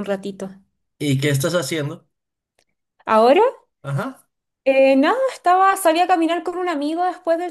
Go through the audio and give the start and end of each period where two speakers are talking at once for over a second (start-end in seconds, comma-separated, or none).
none